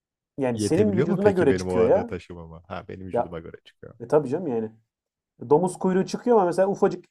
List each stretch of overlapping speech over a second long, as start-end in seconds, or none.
0.5-2.1